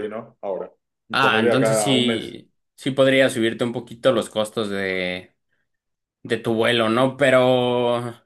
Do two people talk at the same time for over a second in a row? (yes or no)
yes